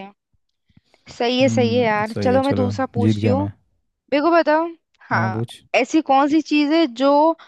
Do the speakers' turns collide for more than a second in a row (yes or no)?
yes